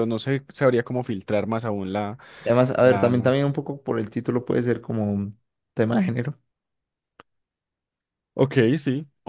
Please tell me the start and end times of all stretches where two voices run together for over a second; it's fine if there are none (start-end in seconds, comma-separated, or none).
none